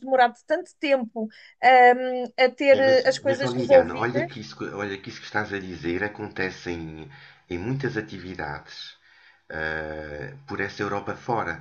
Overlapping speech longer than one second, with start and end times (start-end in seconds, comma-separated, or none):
2.7-4.3